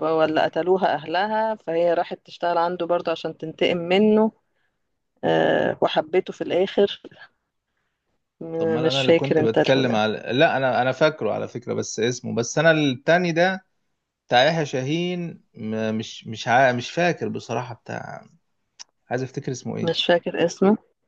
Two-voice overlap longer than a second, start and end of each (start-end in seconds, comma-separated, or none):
8.6-10.0